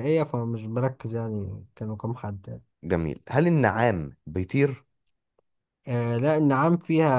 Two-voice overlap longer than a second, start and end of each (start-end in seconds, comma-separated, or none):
none